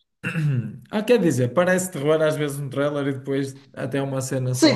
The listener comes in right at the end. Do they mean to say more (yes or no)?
yes